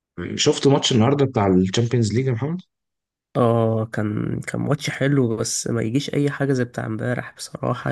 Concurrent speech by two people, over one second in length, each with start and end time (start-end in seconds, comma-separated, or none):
none